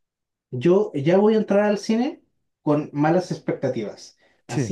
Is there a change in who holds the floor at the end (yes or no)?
no